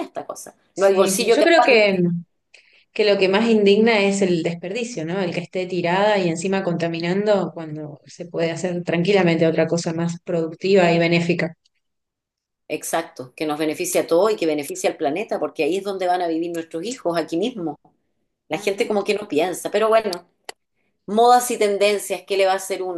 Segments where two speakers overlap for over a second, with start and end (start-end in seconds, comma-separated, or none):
0.7-2.0